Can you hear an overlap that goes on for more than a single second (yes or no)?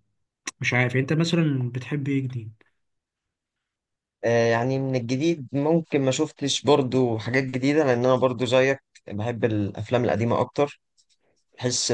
no